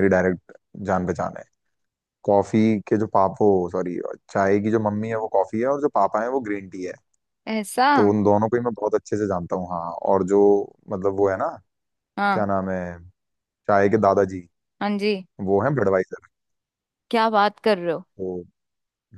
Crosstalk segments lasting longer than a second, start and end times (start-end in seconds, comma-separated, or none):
none